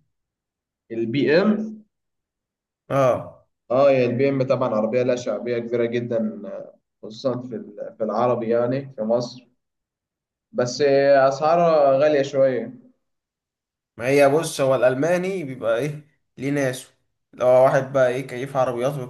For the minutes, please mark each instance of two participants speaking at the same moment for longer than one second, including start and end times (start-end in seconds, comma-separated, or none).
none